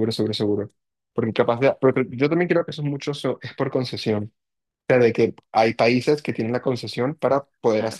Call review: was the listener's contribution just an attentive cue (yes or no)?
yes